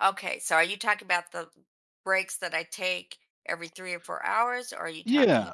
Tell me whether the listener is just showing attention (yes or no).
no